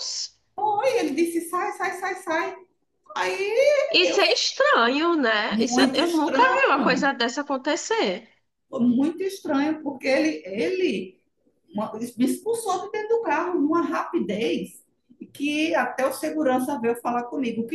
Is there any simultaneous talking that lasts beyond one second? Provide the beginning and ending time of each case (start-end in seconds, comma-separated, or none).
5.5-7.1